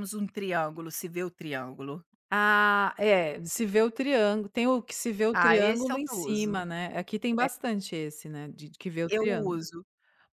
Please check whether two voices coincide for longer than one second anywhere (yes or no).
yes